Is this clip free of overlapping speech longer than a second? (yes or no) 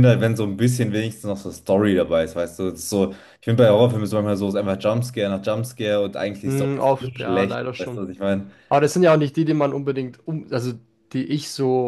no